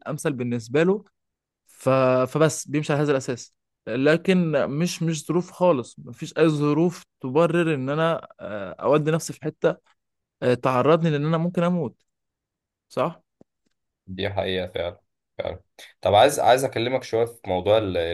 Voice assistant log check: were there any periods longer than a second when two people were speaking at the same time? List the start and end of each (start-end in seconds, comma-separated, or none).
none